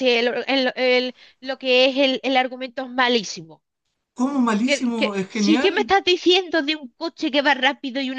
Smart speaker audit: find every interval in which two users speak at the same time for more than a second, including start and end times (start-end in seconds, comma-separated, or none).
4.7-5.9